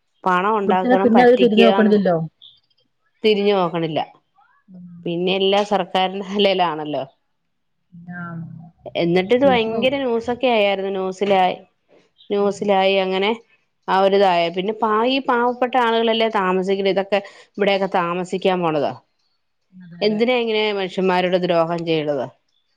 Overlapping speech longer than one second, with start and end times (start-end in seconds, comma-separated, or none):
0.7-1.9